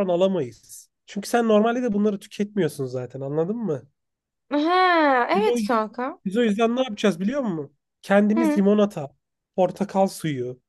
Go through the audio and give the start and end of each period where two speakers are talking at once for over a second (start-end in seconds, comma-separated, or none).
none